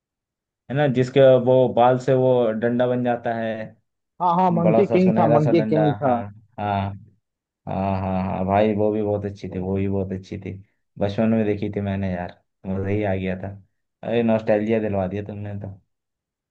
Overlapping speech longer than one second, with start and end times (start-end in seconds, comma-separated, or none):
4.6-6.1